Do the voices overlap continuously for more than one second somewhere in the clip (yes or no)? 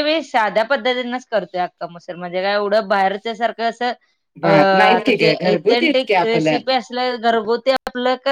yes